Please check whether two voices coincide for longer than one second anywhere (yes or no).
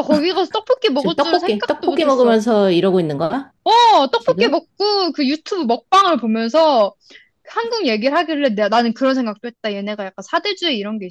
yes